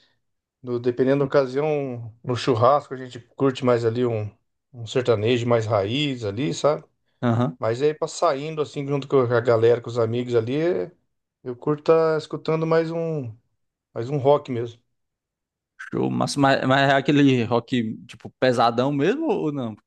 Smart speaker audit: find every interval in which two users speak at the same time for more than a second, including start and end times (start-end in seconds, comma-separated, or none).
none